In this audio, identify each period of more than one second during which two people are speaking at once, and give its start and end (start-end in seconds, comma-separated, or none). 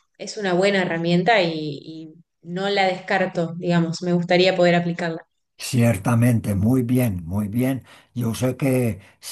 none